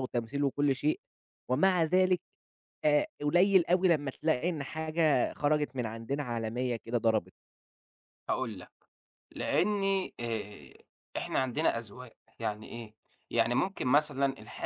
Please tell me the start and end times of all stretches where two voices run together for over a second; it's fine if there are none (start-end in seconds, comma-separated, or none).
none